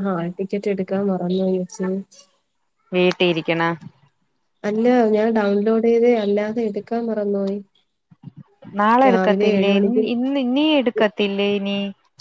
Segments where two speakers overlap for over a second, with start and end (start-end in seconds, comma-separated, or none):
none